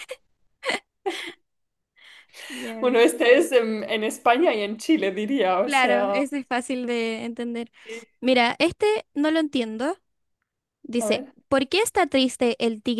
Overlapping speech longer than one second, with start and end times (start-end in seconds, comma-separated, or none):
none